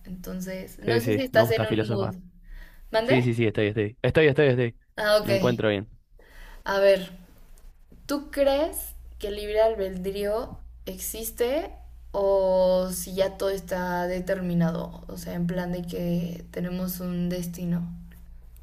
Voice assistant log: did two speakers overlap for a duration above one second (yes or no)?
yes